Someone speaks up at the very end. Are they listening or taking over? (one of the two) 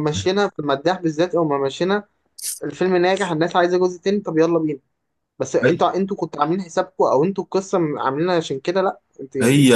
taking over